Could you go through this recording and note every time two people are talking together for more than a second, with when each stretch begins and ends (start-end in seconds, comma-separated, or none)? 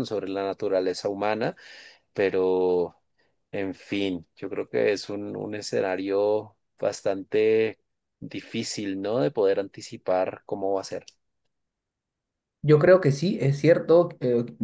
none